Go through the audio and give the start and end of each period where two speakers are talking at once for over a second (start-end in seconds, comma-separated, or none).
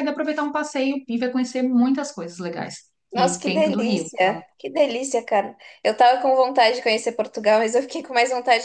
3.1-4.4